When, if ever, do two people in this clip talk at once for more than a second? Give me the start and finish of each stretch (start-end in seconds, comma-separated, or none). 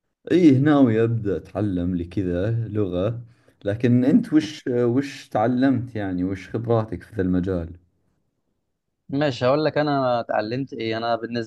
none